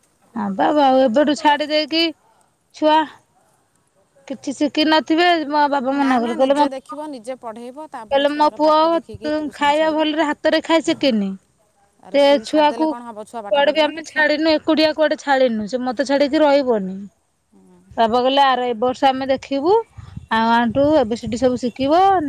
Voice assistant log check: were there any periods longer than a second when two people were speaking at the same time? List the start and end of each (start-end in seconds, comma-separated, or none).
12.2-14.2